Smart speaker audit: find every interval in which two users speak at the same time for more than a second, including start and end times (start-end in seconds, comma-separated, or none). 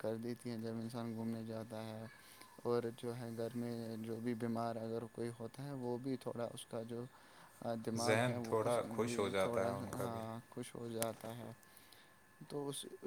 8.0-10.2